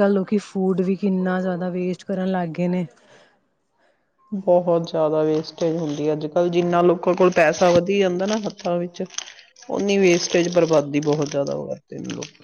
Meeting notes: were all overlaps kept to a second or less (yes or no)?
yes